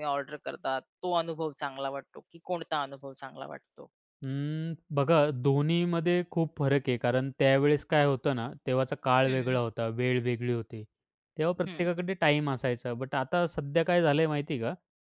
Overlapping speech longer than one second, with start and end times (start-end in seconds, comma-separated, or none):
none